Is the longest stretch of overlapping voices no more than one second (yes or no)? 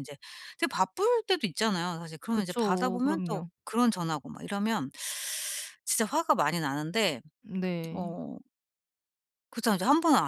no